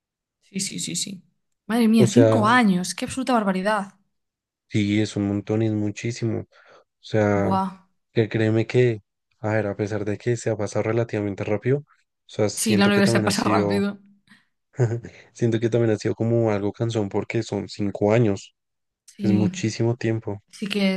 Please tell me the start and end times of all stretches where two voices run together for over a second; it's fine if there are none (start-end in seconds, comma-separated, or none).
12.5-13.9